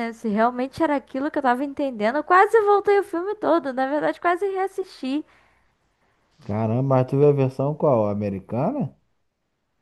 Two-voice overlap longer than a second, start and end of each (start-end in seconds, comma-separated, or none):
none